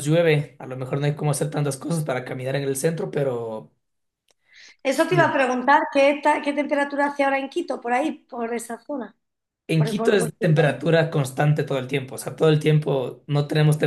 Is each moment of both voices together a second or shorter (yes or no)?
yes